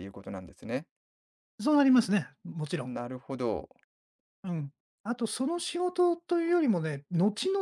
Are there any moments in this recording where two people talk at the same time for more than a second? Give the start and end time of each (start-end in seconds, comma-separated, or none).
none